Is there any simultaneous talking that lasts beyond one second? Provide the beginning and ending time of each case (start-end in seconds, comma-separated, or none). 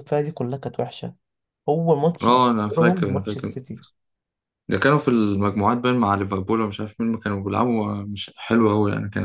2.2-3.6